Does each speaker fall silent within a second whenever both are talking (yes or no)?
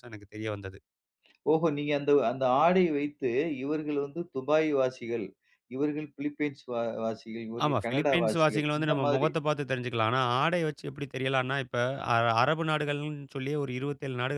no